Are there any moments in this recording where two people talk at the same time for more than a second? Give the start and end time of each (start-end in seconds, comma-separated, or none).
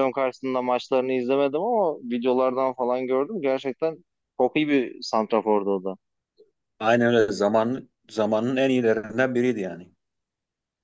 none